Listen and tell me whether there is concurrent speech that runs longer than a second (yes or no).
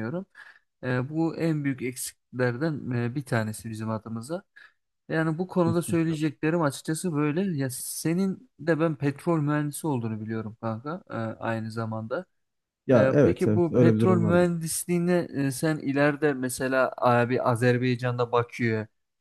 yes